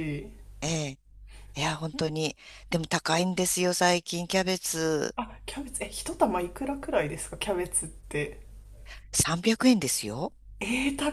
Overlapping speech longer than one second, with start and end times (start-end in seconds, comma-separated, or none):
none